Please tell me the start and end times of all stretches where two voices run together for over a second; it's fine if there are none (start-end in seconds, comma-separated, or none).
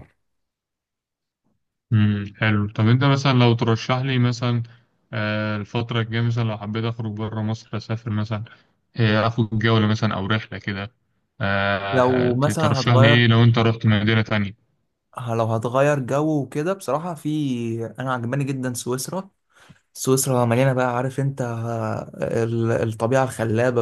11.9-13.3